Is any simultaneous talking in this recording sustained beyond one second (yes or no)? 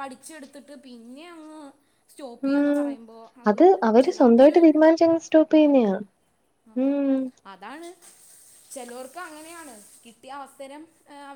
yes